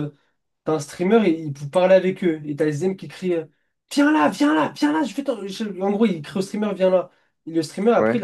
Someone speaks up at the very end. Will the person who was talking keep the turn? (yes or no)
yes